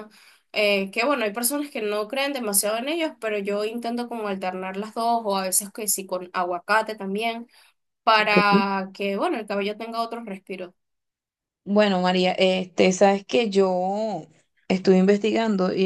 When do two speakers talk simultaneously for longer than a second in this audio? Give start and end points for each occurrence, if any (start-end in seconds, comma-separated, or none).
none